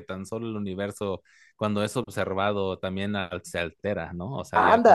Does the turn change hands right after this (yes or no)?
yes